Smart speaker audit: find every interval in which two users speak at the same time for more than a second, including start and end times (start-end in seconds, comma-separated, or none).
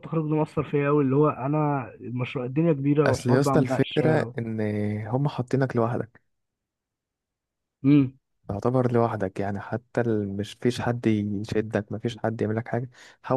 3.1-4.3